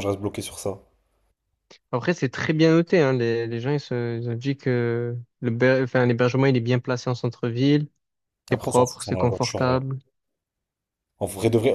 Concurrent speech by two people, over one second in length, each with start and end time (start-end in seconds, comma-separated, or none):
8.5-9.8